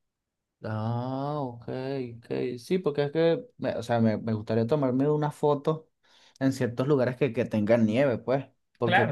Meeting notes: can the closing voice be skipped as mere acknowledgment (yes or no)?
no